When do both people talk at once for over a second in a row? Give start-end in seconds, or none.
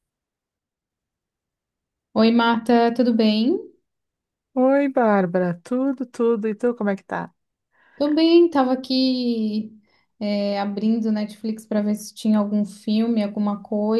none